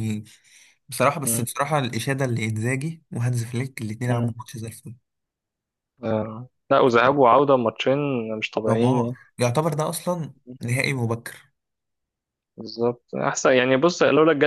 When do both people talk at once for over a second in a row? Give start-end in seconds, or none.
none